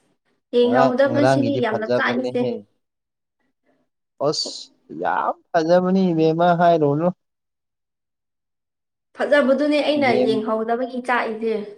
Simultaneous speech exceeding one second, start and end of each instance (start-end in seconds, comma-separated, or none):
0.6-2.4